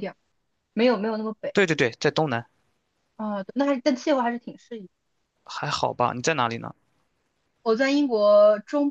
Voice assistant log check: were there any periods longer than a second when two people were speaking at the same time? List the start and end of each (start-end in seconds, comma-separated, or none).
none